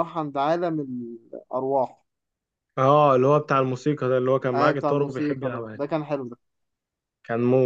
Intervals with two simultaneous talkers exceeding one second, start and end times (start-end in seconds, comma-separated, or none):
4.5-5.8